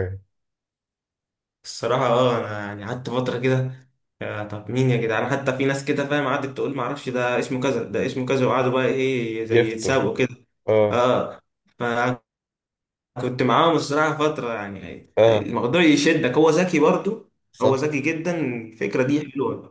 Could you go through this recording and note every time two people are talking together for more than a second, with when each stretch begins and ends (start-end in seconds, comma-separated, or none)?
none